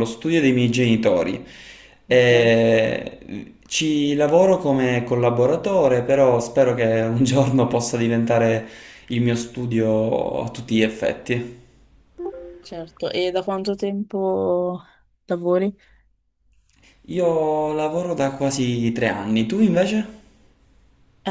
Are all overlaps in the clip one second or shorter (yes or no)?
yes